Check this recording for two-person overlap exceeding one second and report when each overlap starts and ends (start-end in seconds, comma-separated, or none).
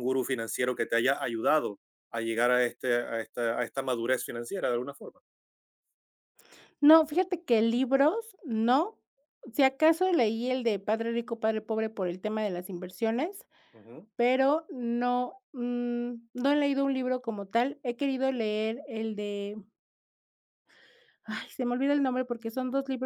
none